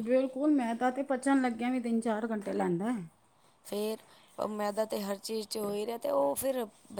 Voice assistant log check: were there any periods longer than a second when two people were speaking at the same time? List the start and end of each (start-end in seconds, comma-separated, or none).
none